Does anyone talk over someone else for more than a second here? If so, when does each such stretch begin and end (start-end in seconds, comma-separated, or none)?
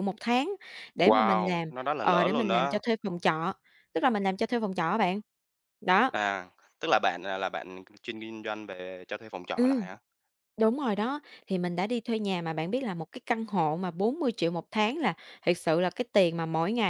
1.0-2.8